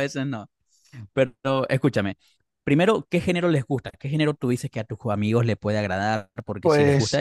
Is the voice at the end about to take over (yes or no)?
no